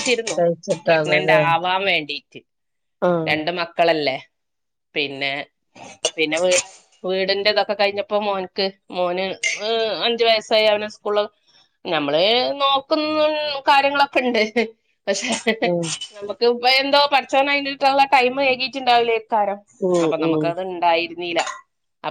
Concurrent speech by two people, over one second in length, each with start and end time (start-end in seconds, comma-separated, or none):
none